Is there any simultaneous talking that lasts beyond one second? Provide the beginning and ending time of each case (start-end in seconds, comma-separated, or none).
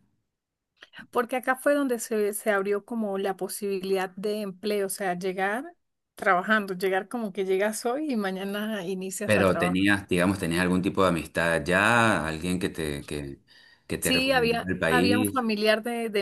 14.0-15.5